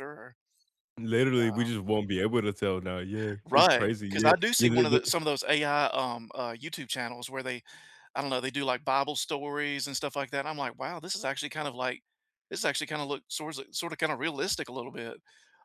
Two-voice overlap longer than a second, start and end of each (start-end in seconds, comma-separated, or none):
3.5-5.0